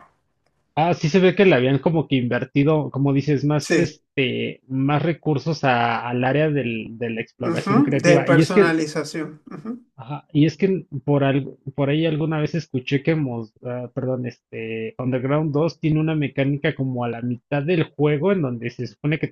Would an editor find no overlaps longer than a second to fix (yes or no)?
no